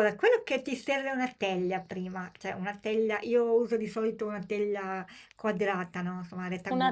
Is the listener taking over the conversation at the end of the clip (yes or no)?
yes